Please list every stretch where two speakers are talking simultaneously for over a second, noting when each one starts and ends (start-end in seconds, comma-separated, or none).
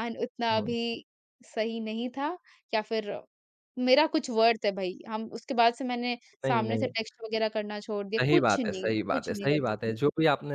8.2-10.0